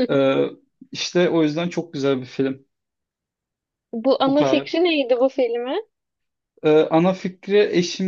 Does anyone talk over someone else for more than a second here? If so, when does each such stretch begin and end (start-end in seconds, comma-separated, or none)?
none